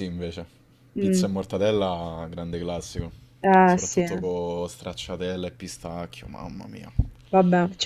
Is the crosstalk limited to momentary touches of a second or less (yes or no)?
yes